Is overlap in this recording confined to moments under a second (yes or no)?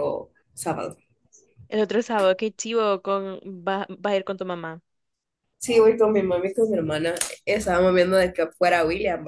yes